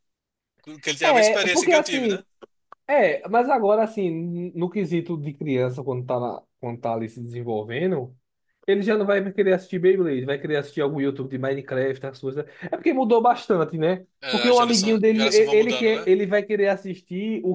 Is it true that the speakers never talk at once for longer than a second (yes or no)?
no